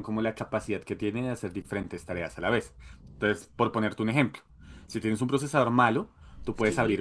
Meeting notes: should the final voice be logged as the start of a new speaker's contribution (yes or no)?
no